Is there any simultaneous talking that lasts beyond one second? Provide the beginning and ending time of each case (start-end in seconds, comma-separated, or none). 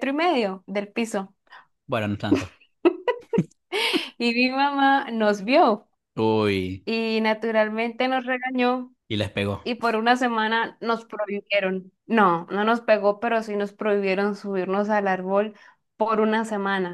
none